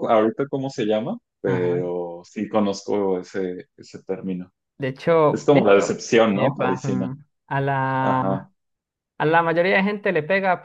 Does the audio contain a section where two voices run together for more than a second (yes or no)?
yes